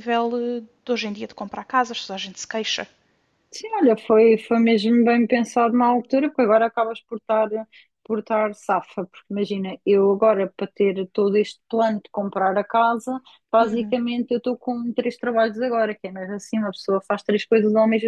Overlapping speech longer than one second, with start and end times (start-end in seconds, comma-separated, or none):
none